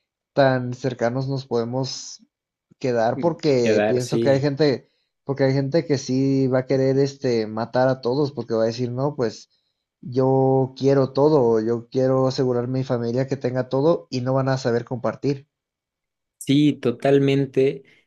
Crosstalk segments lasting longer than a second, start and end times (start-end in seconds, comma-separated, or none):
3.1-4.5